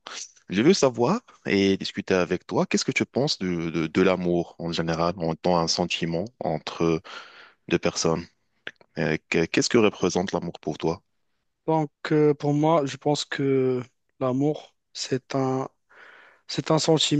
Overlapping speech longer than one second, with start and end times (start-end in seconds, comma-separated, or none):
none